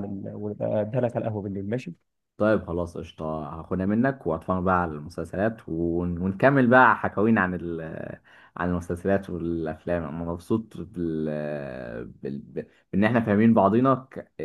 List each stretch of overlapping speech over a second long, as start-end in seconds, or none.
none